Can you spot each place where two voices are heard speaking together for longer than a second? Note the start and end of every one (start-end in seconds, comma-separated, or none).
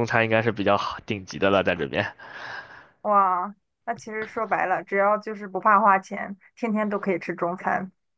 none